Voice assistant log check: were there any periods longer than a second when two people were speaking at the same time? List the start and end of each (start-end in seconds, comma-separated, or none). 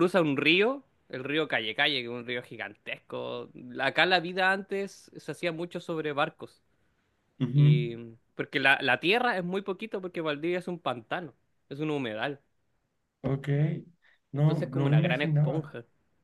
14.3-15.7